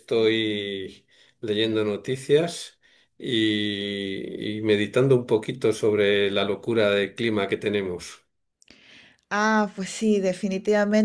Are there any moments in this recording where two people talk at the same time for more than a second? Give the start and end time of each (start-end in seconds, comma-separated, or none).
none